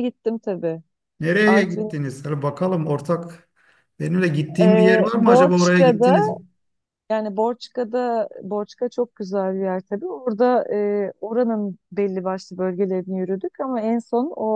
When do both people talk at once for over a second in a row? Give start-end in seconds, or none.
4.6-6.2